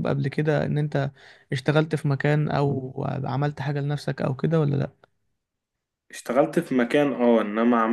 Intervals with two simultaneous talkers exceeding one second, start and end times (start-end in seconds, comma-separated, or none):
none